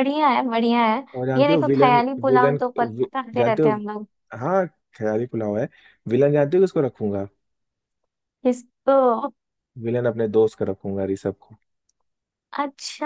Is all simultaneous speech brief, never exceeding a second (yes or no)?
no